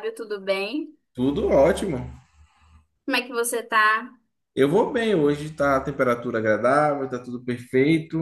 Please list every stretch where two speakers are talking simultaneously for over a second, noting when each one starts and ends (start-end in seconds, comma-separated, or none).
none